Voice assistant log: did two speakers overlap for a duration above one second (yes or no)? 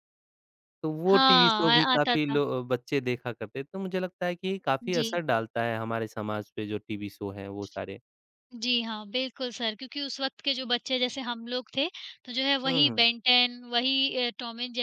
yes